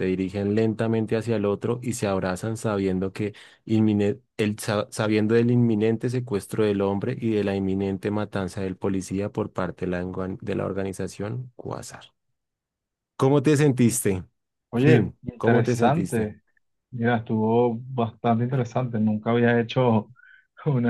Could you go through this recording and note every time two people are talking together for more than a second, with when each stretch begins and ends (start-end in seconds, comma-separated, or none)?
14.8-16.3